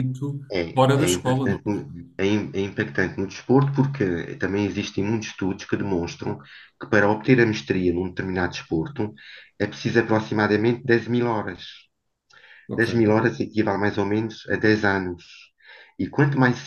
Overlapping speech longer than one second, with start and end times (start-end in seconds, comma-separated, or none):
0.5-1.9